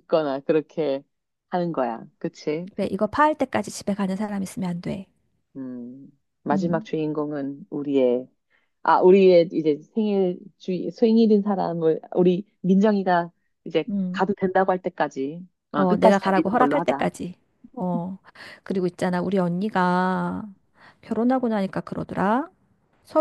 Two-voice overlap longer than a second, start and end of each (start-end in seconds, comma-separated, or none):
15.7-17.1